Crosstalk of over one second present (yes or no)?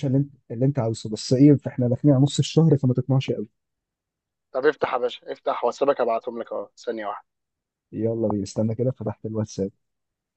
no